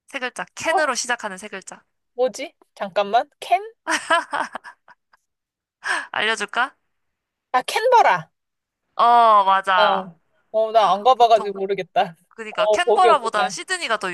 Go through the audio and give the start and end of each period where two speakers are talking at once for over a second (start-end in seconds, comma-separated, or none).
12.3-13.6